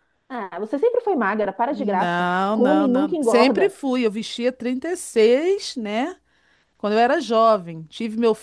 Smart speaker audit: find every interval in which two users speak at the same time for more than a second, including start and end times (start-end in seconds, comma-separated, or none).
1.7-3.8